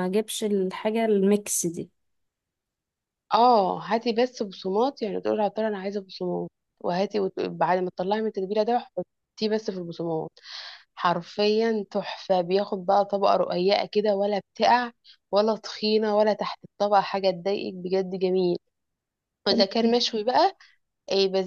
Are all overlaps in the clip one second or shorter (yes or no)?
yes